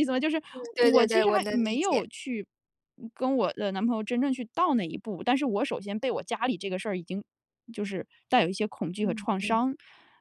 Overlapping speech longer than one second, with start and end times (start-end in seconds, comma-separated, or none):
0.5-2.1